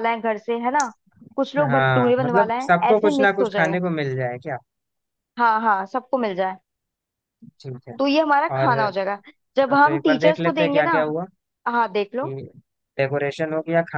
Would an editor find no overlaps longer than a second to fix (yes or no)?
no